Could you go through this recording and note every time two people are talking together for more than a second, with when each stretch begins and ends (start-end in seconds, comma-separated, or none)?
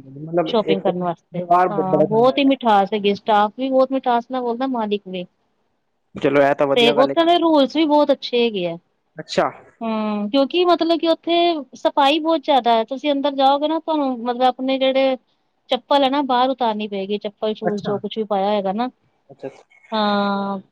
0.5-2.6